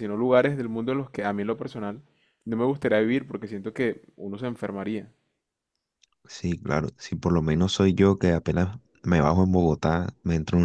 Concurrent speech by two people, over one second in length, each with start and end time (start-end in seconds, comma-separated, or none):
none